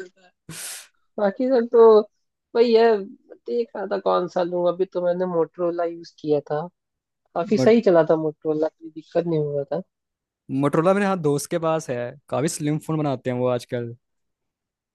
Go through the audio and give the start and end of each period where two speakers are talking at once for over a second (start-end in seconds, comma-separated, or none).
none